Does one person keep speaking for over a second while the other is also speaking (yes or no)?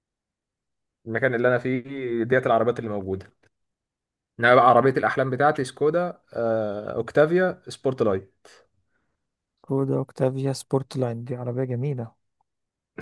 no